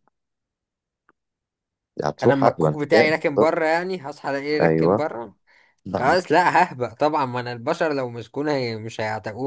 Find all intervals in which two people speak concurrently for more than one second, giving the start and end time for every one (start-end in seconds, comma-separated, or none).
2.2-3.5